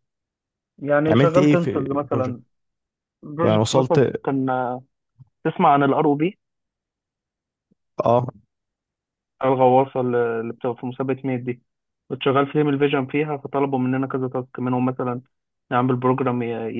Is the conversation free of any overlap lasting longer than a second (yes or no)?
no